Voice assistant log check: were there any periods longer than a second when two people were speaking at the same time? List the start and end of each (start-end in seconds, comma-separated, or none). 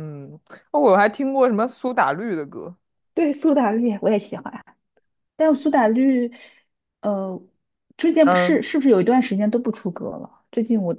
none